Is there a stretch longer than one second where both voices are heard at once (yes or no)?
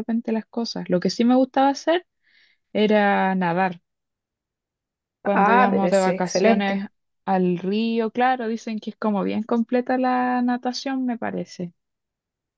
yes